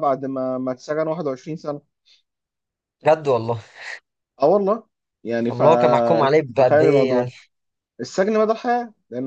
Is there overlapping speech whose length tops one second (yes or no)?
yes